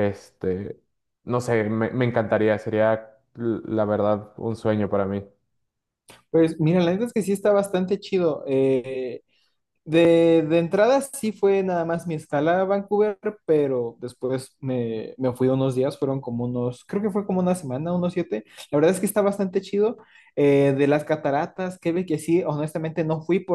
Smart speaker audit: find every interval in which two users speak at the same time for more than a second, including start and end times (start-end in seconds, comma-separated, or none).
none